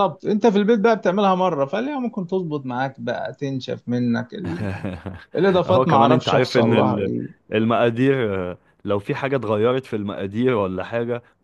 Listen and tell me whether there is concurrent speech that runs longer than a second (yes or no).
yes